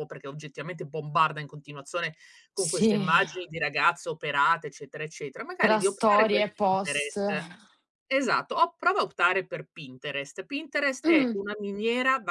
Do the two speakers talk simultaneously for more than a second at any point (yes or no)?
yes